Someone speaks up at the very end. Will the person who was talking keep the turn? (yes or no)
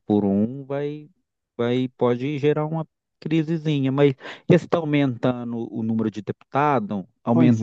no